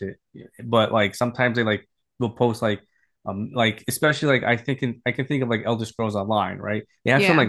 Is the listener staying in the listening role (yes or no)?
yes